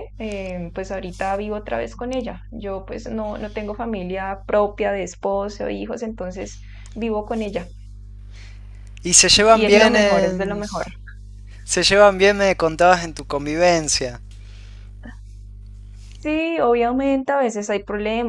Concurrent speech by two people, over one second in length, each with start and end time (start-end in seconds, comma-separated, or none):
9.3-10.6